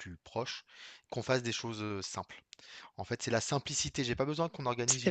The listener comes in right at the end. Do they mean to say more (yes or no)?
no